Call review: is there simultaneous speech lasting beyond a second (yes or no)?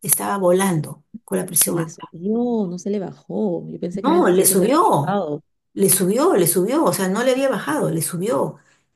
yes